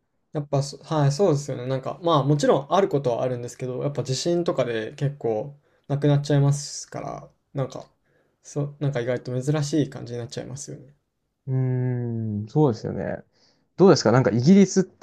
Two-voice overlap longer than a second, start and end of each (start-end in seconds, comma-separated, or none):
none